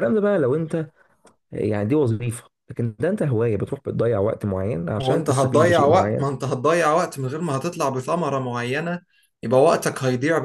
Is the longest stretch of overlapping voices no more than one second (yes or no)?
no